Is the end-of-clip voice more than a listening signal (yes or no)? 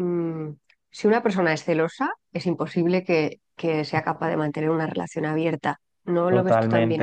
yes